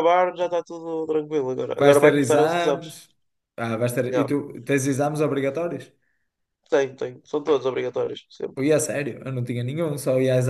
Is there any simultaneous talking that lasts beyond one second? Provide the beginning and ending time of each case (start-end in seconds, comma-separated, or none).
1.7-3.0